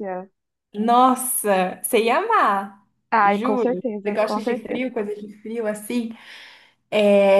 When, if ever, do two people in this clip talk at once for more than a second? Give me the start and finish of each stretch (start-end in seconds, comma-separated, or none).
3.2-4.8